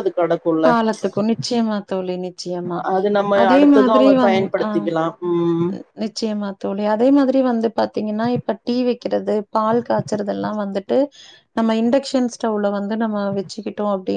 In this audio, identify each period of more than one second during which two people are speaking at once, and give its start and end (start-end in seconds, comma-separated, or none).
none